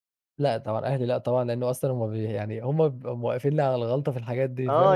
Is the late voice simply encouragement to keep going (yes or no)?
no